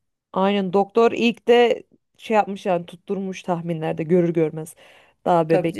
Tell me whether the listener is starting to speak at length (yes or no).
yes